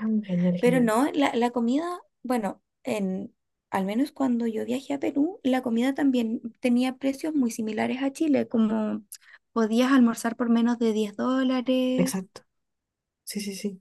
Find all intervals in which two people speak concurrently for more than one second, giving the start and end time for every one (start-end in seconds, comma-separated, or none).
none